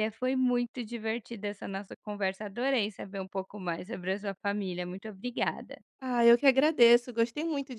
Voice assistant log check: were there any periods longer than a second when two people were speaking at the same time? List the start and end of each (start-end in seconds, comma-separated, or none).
none